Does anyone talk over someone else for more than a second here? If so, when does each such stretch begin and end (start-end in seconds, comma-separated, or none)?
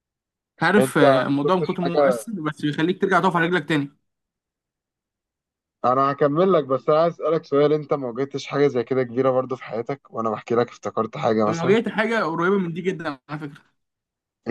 0.8-2.2